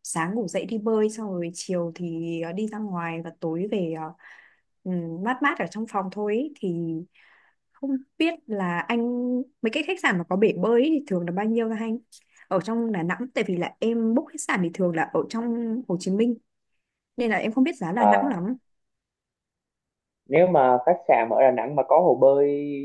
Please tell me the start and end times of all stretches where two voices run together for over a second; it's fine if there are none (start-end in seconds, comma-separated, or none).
none